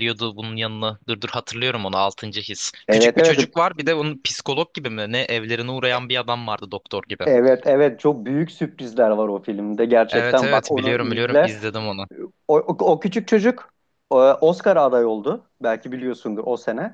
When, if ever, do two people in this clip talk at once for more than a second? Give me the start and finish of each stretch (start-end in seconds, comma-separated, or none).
10.1-11.6